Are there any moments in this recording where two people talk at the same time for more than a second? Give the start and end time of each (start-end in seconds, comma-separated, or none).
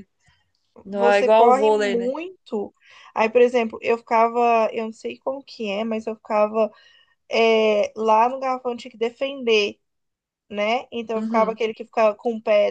0.9-2.1